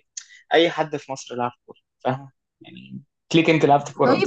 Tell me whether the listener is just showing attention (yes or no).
no